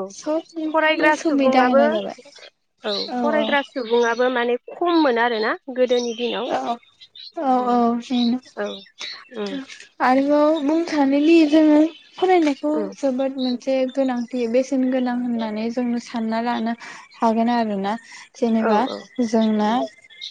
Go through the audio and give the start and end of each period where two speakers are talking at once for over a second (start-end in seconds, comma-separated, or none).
0.7-2.2